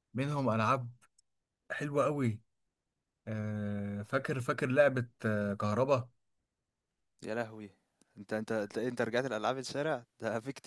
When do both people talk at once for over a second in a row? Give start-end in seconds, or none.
none